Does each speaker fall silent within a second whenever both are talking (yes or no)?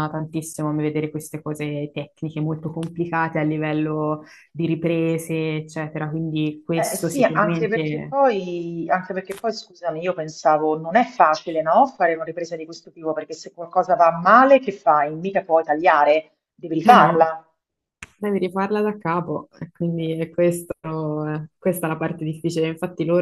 no